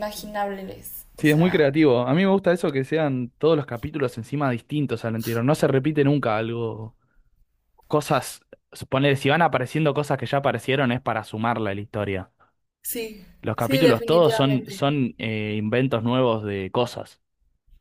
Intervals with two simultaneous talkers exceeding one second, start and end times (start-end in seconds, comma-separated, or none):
13.4-14.9